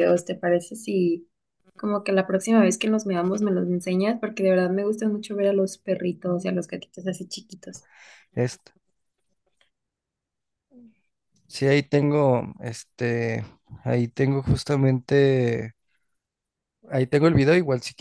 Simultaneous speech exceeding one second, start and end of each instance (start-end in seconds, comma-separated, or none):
none